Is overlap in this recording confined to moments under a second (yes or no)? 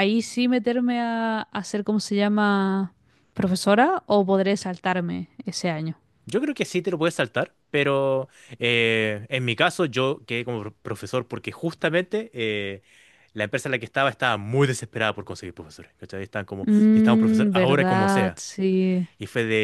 no